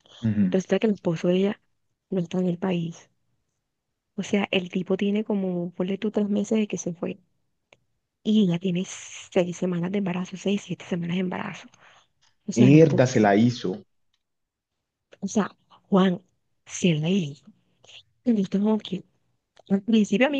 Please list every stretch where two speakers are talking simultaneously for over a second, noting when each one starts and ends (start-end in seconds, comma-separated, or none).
12.6-13.8